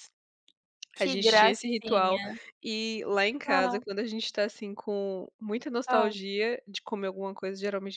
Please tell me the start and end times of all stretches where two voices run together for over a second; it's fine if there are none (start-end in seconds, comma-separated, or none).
1.0-2.2